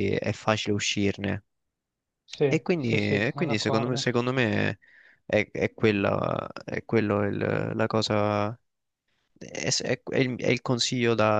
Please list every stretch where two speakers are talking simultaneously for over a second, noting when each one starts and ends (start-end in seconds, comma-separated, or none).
2.5-4.0